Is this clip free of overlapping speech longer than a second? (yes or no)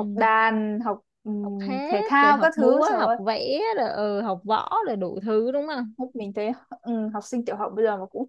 no